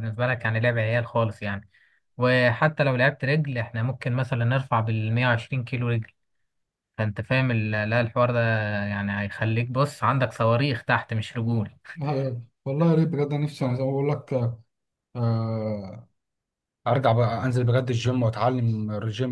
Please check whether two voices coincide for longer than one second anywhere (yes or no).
no